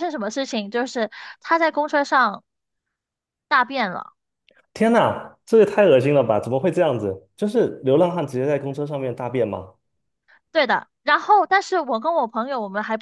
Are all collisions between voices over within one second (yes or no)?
yes